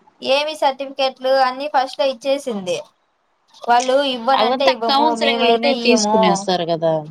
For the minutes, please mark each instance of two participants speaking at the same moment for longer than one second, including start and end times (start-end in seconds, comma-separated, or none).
4.4-6.1